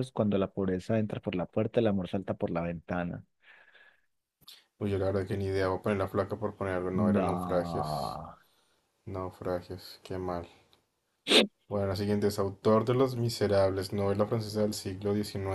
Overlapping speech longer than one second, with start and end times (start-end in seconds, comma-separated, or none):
6.9-8.2